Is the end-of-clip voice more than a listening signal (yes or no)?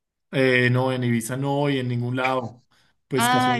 no